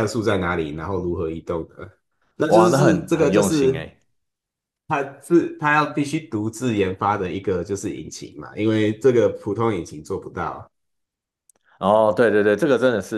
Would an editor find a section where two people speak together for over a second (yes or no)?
yes